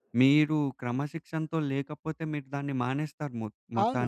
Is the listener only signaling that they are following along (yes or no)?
no